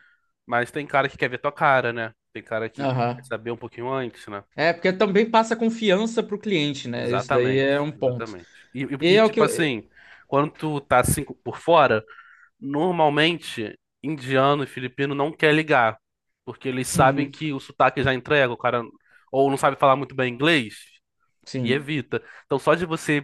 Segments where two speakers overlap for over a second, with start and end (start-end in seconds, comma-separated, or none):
7.0-8.3